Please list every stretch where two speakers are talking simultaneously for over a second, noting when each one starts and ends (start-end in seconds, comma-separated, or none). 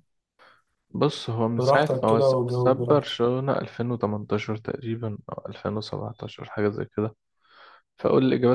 1.6-3.2